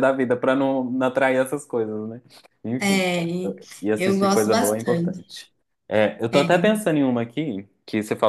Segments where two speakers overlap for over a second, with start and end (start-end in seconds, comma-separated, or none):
4.0-5.3